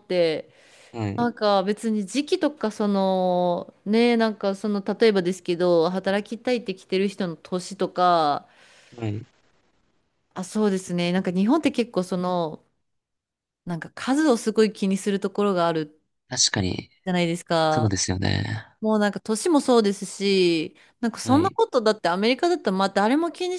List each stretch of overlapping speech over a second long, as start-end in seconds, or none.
none